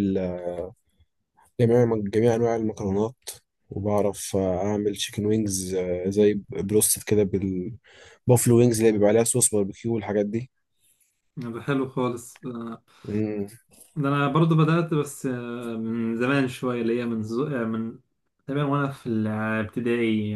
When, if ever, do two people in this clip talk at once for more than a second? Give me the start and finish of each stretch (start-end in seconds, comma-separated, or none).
none